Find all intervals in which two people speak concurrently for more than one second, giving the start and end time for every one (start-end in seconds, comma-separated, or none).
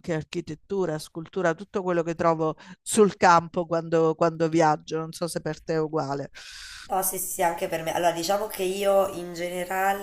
none